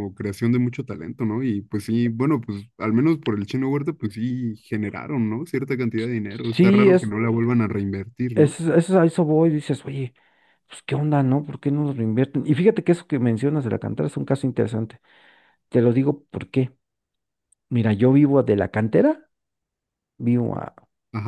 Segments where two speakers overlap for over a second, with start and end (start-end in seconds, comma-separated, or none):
none